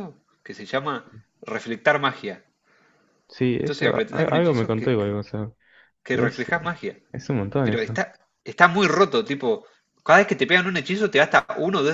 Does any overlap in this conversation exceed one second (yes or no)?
yes